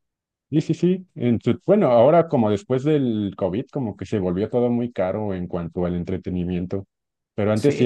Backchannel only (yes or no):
yes